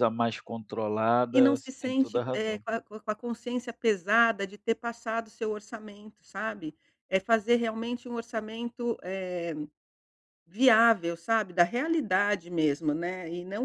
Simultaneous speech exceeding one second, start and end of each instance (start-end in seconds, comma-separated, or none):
1.3-2.6